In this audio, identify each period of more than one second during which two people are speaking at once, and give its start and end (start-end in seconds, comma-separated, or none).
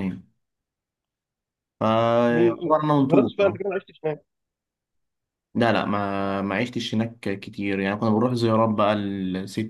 2.3-3.6